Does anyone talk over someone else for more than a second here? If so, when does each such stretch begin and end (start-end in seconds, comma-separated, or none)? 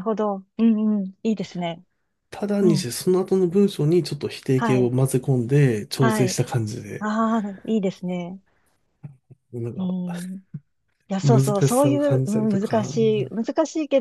11.2-12.9